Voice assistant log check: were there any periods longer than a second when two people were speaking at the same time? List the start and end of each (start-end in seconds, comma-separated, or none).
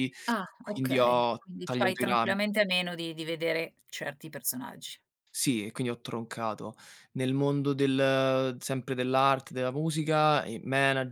0.6-2.4